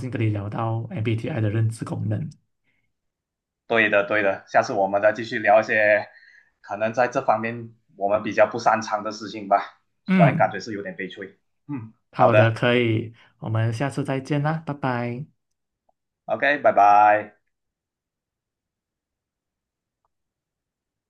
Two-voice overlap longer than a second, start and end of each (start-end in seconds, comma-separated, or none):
none